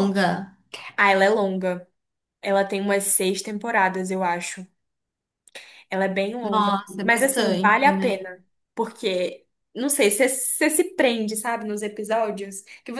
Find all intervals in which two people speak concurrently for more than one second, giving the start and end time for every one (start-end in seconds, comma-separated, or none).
6.4-8.3